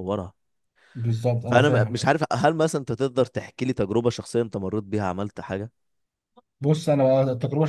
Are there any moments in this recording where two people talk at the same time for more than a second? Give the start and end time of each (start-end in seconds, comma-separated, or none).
none